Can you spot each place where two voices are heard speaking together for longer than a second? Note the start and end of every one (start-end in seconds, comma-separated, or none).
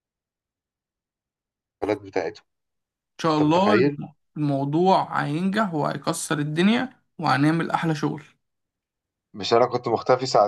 none